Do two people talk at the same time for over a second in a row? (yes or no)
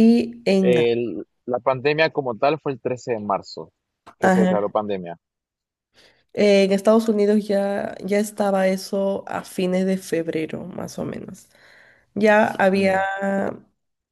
no